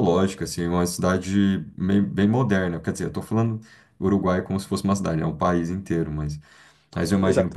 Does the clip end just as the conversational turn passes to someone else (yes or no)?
no